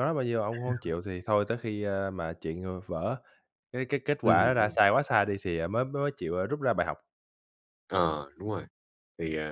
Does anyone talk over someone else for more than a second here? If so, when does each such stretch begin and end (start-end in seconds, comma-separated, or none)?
none